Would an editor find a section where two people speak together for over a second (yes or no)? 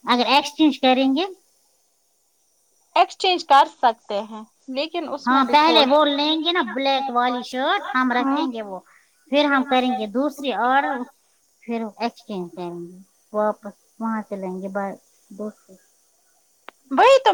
yes